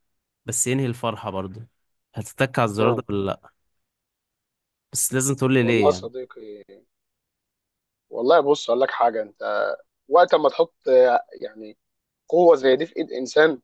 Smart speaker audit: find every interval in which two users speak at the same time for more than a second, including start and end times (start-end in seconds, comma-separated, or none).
none